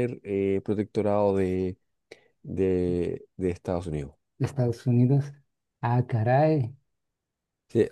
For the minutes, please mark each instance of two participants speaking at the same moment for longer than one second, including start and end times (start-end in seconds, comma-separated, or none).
none